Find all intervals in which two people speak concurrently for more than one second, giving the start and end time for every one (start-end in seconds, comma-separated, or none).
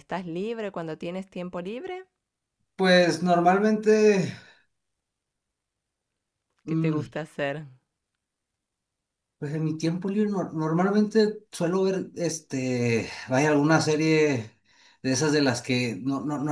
none